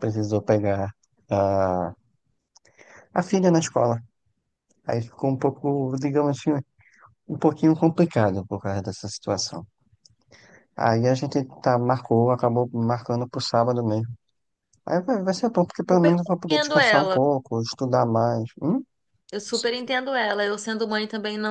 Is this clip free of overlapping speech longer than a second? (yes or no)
no